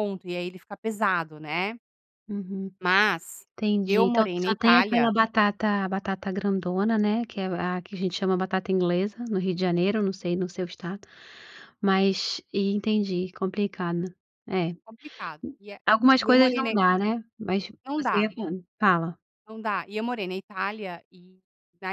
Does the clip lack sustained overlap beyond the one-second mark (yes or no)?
no